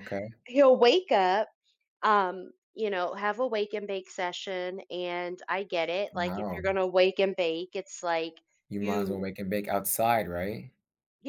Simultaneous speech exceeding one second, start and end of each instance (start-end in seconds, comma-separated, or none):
none